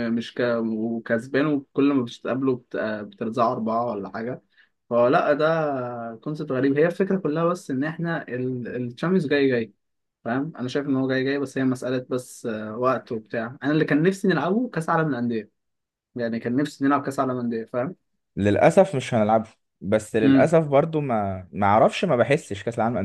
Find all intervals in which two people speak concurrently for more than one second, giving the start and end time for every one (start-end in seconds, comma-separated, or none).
none